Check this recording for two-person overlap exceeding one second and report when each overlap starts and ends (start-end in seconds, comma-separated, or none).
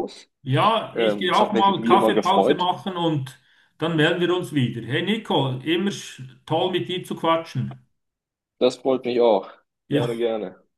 0.9-2.7